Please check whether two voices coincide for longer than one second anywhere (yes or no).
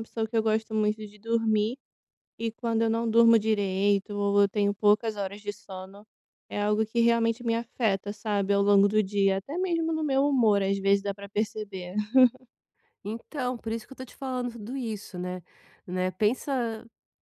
no